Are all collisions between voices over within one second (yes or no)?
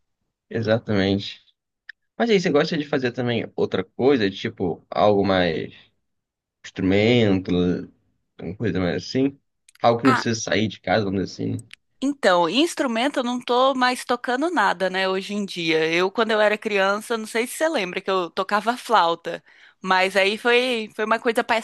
yes